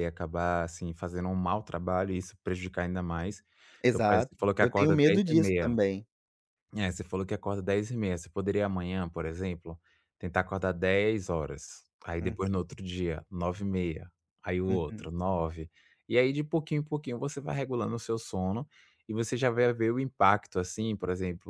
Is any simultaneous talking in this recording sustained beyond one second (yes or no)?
yes